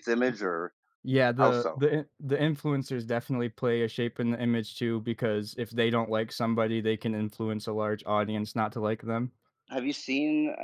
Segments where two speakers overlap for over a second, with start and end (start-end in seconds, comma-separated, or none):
none